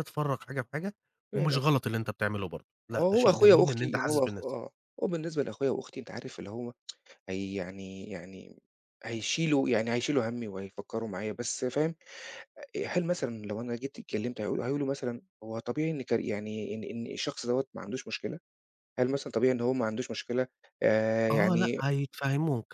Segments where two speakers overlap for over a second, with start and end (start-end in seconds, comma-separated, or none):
3.0-4.6